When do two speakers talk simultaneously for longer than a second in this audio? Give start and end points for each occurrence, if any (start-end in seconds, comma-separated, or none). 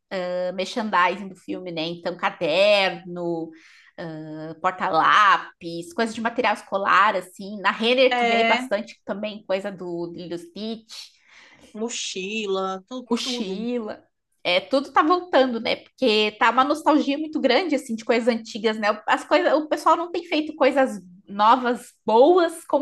none